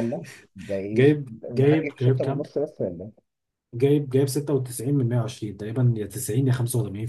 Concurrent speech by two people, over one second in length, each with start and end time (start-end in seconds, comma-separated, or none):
0.9-2.5